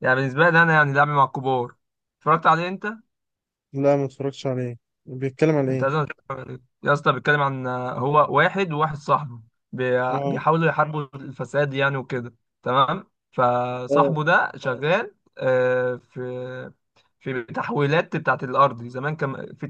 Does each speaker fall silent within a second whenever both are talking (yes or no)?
yes